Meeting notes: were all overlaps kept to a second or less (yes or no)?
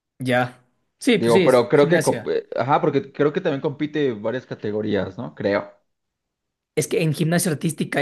no